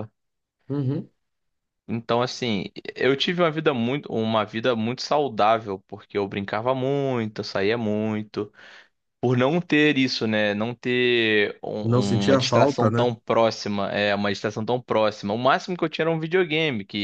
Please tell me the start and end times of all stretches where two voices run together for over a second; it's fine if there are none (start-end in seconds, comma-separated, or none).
11.8-13.1